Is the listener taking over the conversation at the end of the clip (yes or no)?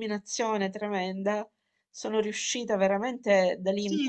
yes